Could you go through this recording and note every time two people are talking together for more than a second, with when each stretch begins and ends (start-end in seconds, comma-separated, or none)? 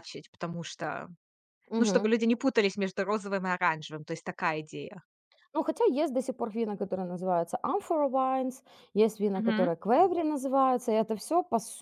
none